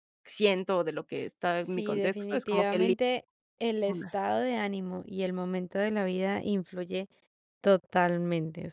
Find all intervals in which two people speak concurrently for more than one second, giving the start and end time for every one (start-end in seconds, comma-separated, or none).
1.6-2.9